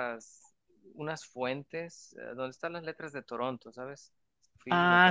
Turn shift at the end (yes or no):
yes